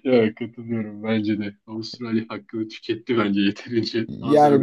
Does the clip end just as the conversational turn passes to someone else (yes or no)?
yes